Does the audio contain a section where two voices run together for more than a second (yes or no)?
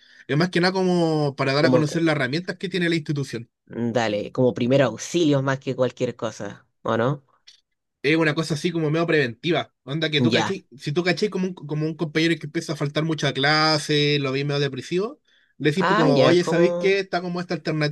yes